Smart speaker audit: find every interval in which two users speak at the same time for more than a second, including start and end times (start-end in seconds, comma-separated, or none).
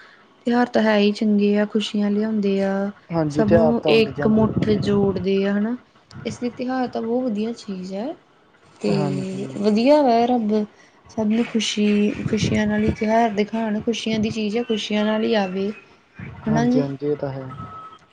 3.4-5.2